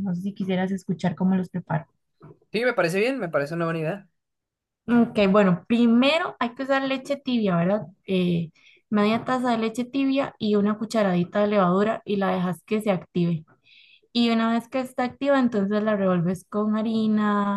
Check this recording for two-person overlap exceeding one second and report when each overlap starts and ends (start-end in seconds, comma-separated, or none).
none